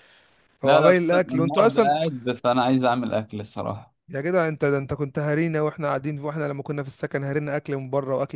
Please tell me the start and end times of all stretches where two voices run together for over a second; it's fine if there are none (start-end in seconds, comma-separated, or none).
0.6-1.9